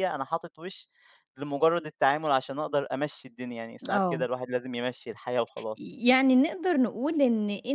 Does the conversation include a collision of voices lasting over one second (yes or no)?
no